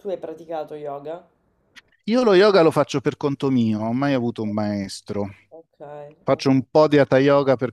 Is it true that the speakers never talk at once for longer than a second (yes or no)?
yes